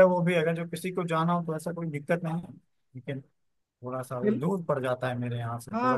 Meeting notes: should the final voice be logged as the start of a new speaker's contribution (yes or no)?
yes